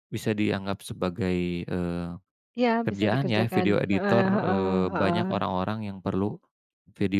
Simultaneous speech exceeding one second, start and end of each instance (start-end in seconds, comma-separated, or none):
2.8-5.2